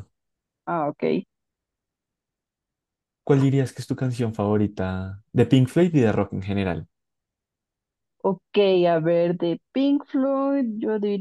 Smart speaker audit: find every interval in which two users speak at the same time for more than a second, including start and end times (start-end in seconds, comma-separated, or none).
none